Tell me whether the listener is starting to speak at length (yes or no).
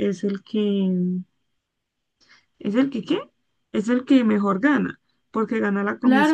yes